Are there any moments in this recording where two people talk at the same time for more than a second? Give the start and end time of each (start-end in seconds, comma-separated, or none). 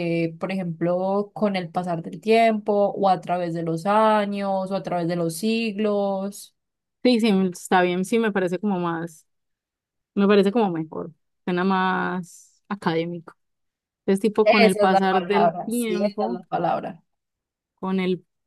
14.4-16.4